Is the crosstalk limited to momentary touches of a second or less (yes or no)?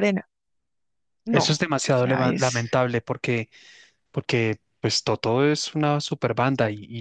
no